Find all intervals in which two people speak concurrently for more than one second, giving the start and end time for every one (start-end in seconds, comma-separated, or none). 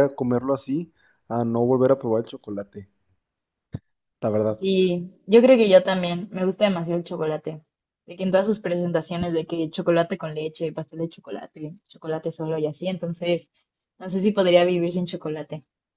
none